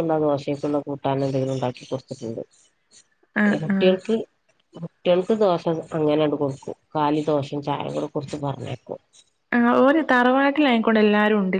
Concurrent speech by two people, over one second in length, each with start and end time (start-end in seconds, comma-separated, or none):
none